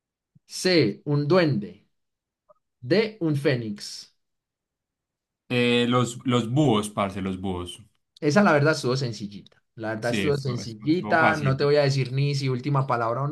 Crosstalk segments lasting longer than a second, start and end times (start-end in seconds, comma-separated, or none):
10.0-11.6